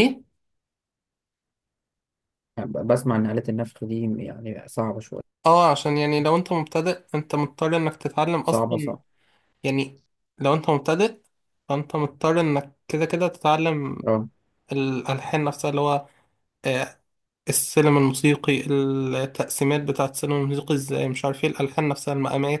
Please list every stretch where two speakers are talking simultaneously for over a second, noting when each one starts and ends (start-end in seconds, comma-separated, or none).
none